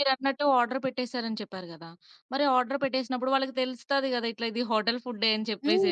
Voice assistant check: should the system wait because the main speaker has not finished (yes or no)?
no